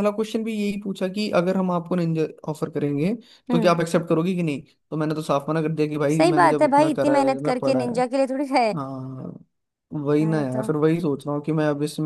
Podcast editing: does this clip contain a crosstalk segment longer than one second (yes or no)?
yes